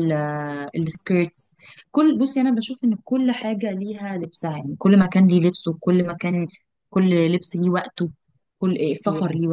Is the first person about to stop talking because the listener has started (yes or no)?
no